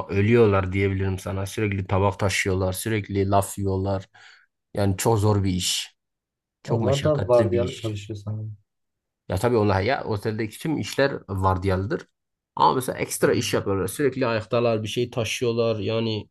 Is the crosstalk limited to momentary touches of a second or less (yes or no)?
no